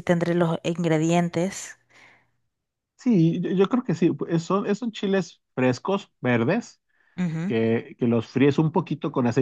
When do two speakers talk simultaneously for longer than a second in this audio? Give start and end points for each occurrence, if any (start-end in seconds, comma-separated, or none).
none